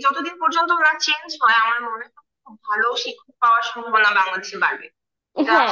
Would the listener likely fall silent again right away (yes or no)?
no